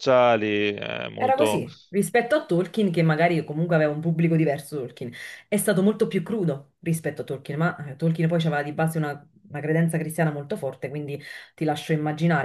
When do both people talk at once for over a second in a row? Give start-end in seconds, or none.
none